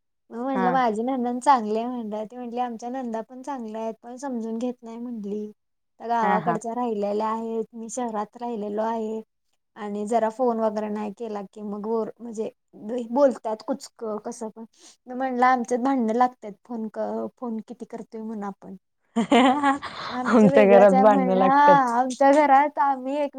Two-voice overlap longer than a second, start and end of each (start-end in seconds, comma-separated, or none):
20.3-21.6